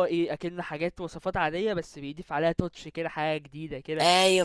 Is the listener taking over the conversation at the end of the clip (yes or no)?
no